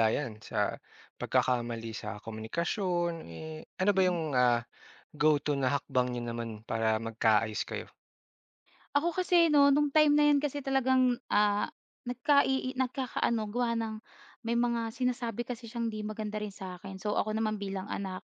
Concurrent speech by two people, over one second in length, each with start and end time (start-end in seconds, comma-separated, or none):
none